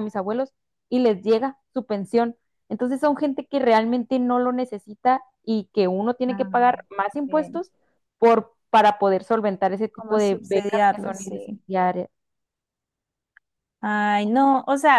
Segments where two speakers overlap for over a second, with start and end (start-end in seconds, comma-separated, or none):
9.9-11.6